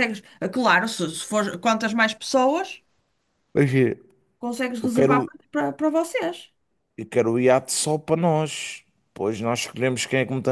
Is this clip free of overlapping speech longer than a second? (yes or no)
yes